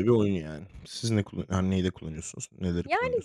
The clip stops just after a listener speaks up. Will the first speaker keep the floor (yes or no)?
no